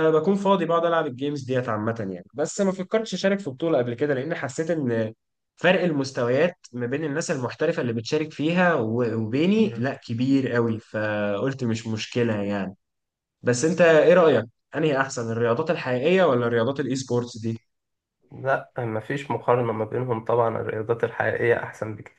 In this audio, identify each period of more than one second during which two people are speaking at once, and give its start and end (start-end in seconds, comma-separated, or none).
none